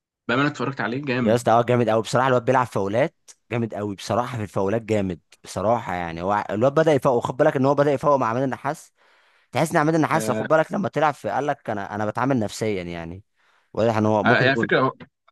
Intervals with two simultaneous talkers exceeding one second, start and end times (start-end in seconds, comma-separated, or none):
none